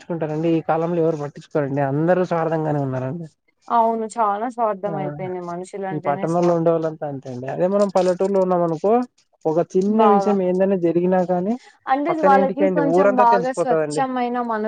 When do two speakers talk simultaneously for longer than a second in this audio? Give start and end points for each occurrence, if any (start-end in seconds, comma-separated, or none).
12.1-14.1